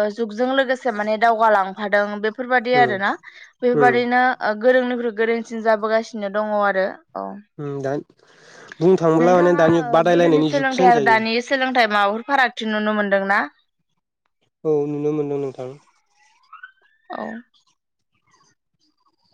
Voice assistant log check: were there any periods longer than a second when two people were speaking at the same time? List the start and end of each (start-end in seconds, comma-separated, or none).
9.2-11.2